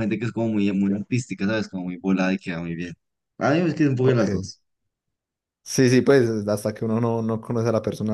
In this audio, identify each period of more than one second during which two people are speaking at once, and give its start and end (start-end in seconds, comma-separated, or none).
none